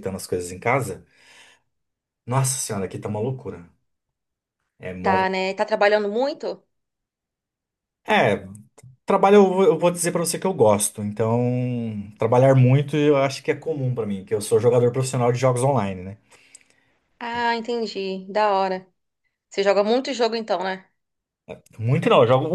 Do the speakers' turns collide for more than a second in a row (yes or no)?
no